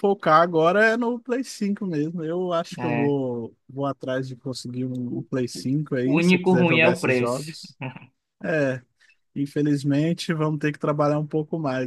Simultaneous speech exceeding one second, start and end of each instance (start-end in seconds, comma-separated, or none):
6.0-7.6